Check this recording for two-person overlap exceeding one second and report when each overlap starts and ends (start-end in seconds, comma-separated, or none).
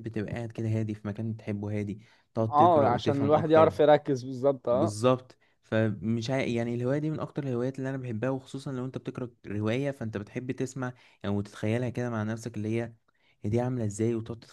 2.5-3.7